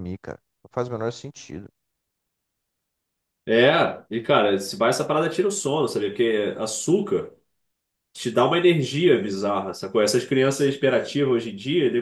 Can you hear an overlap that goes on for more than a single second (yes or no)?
no